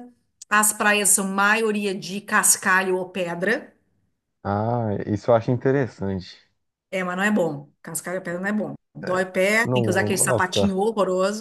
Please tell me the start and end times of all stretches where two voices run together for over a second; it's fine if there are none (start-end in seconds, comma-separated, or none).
9.0-10.7